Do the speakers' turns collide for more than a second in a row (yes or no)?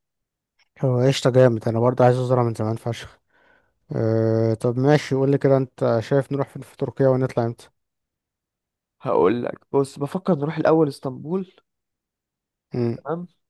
no